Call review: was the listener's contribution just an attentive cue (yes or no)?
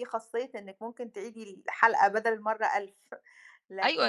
no